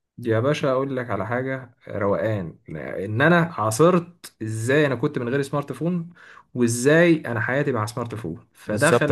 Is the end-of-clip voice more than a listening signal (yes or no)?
yes